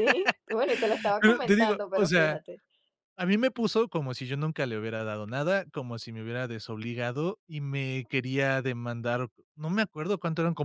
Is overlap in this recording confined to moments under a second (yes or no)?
no